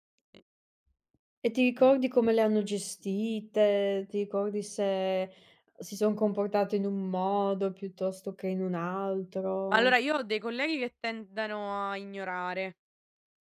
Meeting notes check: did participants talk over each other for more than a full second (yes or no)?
no